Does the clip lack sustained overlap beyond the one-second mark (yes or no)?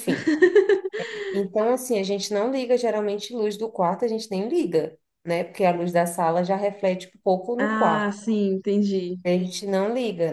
yes